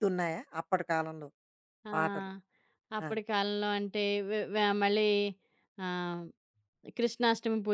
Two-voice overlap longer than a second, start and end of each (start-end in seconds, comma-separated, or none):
none